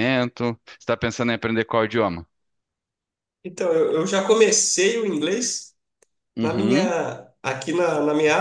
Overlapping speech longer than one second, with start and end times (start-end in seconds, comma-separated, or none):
none